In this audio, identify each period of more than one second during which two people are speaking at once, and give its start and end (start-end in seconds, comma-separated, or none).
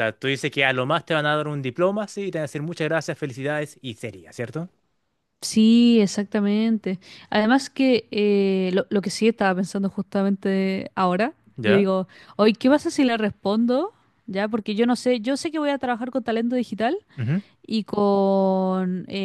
none